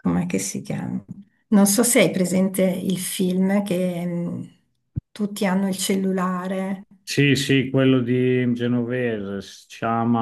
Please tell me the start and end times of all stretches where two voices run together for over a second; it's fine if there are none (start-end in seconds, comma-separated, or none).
none